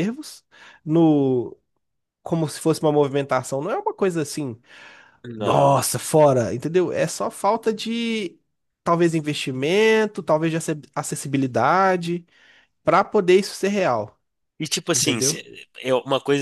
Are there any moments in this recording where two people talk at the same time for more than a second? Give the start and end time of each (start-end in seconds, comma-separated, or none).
none